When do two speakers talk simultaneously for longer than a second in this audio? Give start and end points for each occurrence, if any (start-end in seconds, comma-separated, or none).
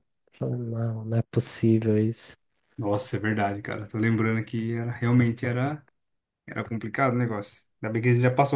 none